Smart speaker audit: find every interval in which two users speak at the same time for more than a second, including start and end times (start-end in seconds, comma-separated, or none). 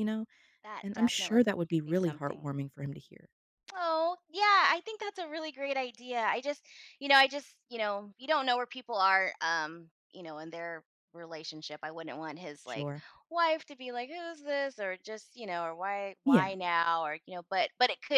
0.8-2.5